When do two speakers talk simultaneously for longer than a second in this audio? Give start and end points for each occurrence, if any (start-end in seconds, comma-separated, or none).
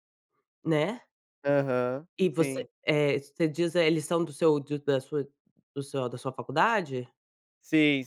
none